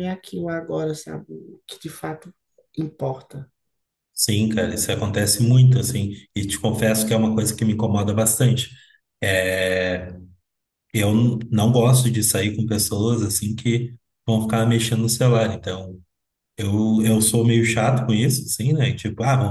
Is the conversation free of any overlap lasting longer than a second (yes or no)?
yes